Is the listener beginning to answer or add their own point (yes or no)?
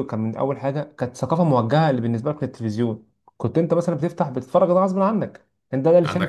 no